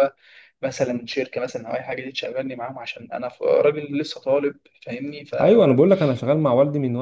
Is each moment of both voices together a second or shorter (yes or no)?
yes